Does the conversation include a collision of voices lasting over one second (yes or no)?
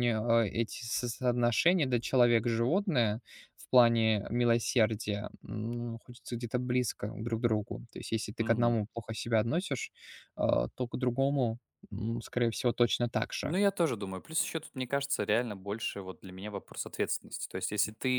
no